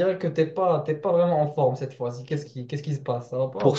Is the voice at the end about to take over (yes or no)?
yes